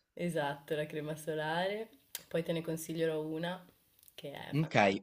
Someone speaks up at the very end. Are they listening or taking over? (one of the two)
taking over